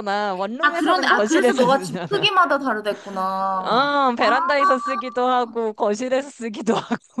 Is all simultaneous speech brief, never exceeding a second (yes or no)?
no